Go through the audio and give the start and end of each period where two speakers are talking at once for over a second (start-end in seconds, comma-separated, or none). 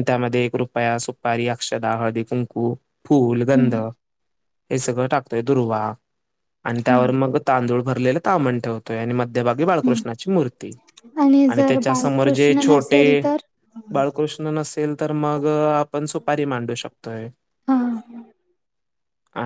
11.6-13.0